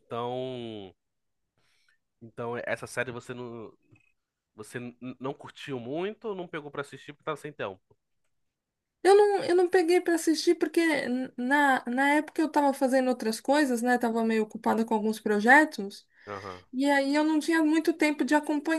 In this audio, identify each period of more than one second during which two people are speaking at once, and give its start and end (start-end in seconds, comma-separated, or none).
none